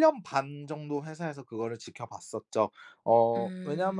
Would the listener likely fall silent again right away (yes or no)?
yes